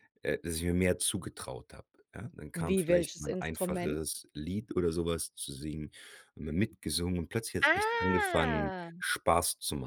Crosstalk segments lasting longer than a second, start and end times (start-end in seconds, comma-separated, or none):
2.5-4.0, 7.6-9.0